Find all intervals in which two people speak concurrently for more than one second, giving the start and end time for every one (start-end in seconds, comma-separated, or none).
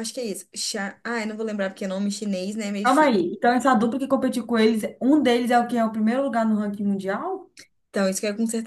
none